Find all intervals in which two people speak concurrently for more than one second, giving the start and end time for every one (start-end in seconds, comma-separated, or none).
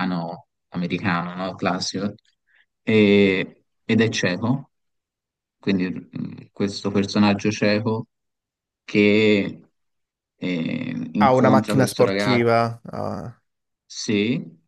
11.2-12.5